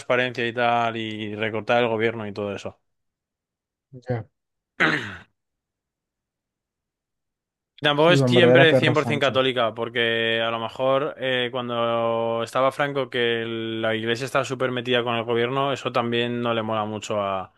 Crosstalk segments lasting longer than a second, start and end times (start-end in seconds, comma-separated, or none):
8.0-9.5